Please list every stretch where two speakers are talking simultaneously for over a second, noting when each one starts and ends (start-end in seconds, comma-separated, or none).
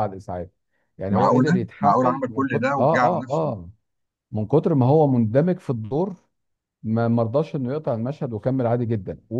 1.1-3.5